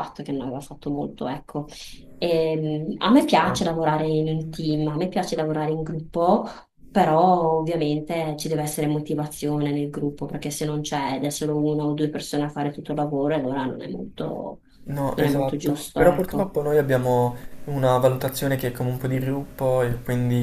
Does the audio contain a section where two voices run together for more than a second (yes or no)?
yes